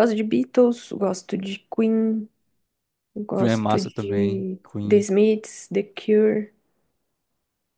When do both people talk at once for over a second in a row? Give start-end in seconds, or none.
3.4-5.0